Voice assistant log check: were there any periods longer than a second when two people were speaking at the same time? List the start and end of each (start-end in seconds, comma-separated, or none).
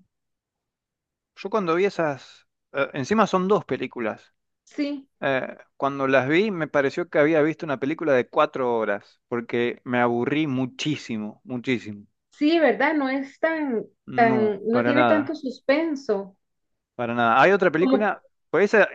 14.1-15.4